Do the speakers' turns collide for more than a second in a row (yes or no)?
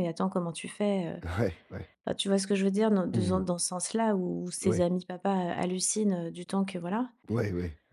no